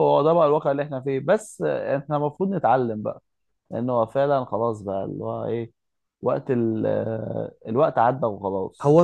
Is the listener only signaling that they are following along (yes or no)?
no